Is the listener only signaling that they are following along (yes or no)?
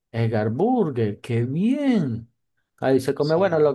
yes